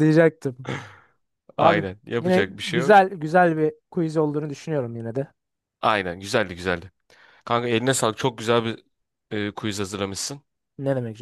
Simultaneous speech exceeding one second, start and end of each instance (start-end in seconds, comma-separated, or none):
1.6-3.0